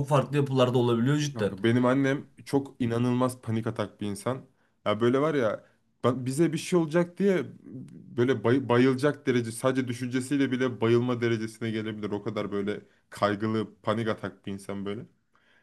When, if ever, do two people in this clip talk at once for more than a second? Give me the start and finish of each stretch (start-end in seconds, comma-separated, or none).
none